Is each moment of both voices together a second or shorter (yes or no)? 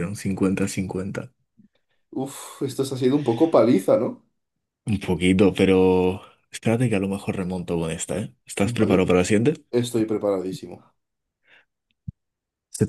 yes